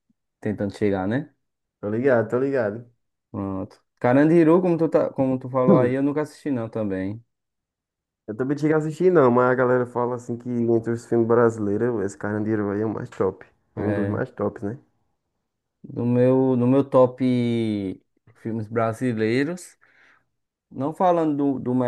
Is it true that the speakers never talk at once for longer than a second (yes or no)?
yes